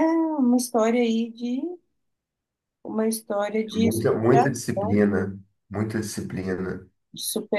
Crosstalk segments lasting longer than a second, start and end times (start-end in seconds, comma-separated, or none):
3.7-5.0